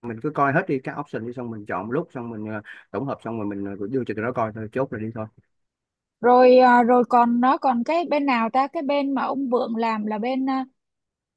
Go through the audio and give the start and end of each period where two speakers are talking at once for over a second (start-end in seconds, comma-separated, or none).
none